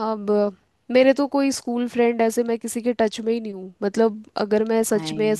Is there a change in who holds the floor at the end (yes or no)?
no